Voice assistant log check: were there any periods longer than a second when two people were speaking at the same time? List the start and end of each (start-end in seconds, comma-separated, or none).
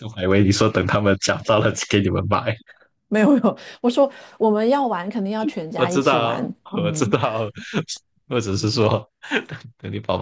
5.7-7.1